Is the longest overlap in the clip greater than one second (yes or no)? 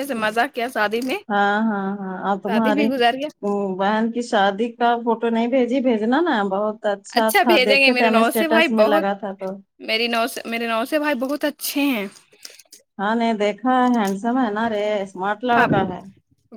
yes